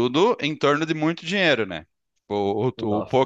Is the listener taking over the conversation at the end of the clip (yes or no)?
no